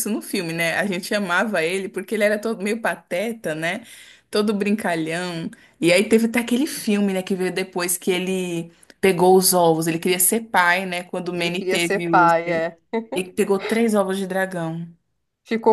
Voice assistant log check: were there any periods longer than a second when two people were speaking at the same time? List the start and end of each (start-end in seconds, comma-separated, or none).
11.3-12.7